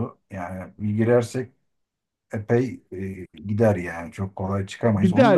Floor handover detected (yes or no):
yes